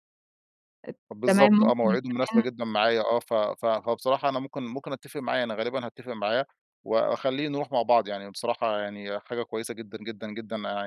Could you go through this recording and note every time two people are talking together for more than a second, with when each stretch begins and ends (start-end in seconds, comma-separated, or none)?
1.1-2.5